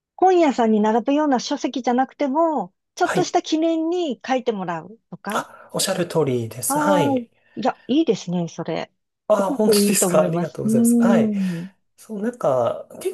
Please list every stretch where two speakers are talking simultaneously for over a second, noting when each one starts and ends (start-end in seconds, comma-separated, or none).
9.4-10.7